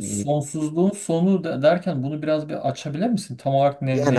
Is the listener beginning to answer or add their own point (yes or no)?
yes